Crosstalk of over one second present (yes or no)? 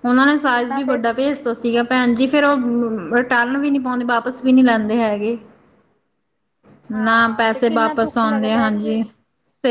yes